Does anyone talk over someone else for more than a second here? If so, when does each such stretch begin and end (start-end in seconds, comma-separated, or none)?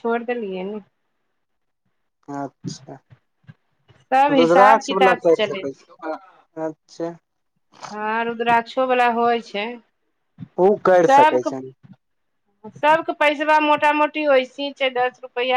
4.4-5.9